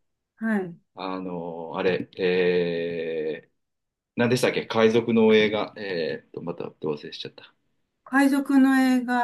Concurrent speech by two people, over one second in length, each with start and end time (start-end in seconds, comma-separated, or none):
none